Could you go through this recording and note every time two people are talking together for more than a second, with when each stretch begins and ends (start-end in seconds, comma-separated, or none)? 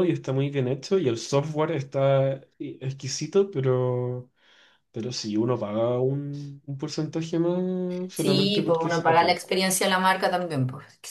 8.1-9.4